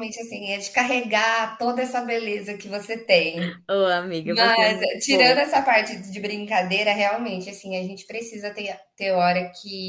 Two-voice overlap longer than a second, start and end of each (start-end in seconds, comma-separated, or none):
4.2-5.6